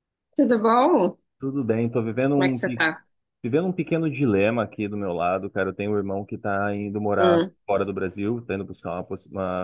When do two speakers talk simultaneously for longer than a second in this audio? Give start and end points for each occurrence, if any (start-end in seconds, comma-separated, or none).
none